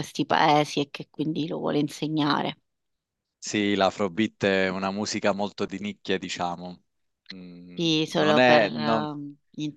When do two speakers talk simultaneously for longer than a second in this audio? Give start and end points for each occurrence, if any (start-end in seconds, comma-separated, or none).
7.8-9.1